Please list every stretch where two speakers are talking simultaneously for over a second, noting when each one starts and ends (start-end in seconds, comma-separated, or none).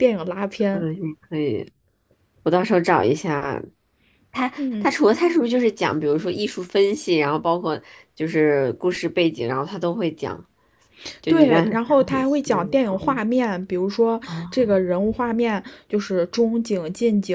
11.3-13.2